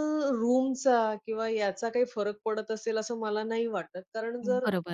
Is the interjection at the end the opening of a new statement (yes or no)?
yes